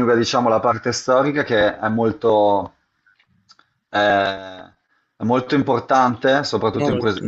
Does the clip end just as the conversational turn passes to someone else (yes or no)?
no